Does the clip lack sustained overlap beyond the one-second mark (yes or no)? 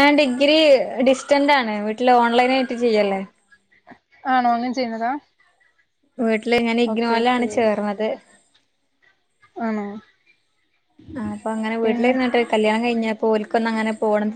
yes